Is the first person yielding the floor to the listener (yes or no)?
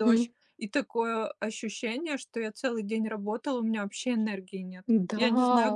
yes